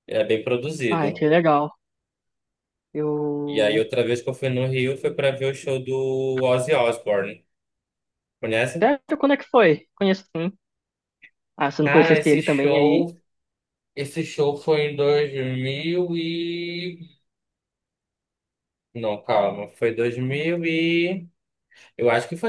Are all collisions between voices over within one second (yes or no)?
no